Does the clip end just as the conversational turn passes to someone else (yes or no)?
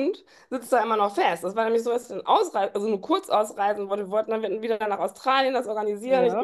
no